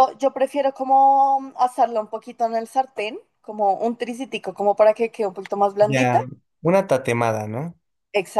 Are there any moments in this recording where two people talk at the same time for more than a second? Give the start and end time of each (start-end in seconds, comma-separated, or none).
none